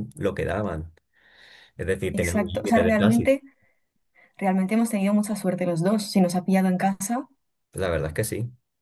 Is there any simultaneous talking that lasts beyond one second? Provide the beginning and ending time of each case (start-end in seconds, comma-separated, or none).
2.1-3.4